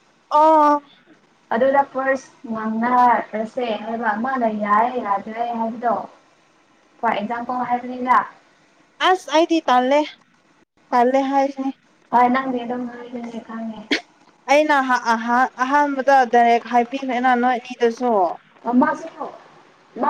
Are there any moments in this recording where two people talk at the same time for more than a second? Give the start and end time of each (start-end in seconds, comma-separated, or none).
none